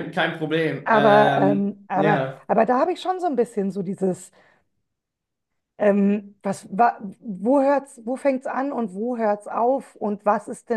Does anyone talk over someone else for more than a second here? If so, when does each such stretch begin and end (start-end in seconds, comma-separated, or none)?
0.8-2.5